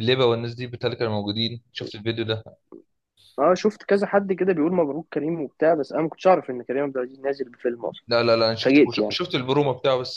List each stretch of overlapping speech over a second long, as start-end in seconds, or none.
none